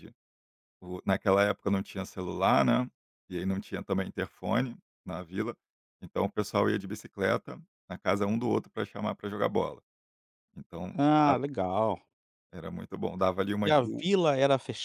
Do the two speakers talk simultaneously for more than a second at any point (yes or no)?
no